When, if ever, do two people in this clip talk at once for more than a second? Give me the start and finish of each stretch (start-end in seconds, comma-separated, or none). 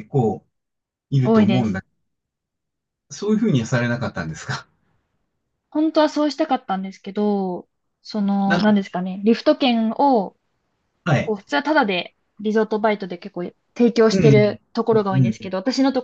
14.1-15.5